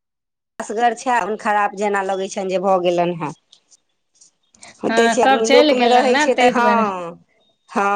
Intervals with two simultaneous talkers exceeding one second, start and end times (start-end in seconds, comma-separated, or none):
4.9-6.8